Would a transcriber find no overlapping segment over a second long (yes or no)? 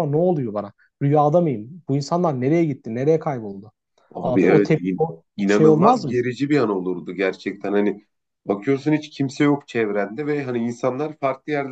no